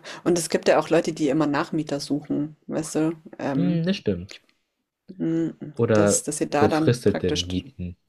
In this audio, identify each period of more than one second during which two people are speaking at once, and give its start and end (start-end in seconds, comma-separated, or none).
5.7-7.5